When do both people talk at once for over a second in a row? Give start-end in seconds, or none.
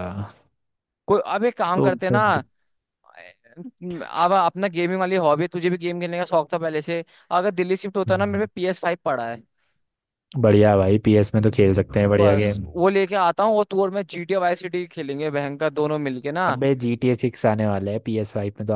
none